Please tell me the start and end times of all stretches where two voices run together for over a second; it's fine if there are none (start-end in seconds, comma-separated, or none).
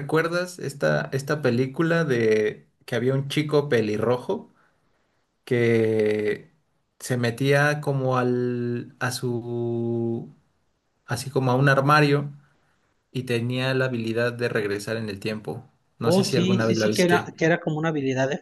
16.0-17.4